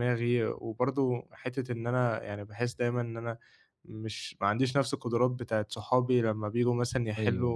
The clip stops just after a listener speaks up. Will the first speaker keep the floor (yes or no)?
yes